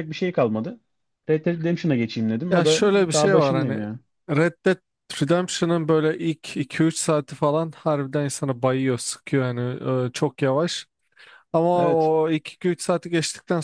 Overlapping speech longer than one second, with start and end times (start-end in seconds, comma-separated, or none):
2.5-3.8